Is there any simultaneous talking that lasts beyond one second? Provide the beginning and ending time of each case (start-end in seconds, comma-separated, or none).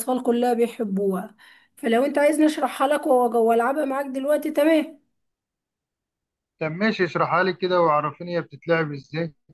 none